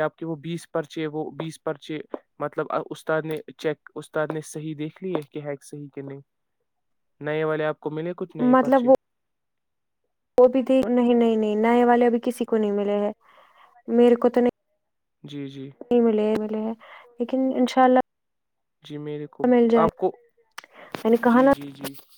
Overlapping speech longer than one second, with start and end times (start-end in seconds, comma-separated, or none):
none